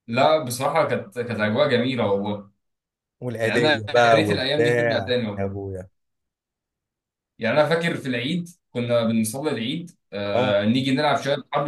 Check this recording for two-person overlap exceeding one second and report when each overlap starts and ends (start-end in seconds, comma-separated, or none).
3.4-5.6